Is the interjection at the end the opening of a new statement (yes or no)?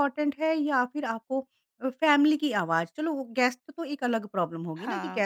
no